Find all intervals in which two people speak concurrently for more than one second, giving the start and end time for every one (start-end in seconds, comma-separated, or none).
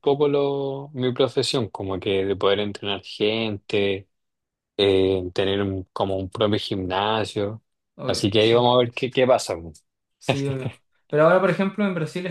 none